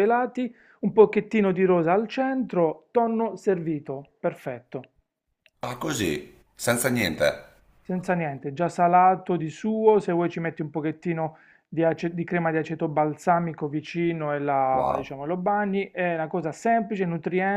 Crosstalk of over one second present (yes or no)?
no